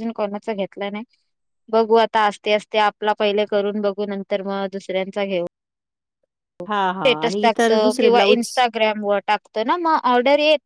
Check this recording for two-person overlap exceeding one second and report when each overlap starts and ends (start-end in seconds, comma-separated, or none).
6.7-8.5